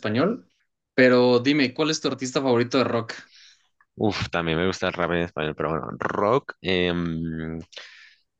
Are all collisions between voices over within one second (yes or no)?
yes